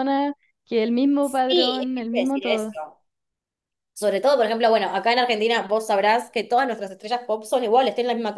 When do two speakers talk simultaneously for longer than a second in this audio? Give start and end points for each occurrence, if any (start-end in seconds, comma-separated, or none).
1.2-2.7